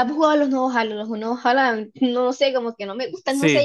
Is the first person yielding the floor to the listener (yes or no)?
yes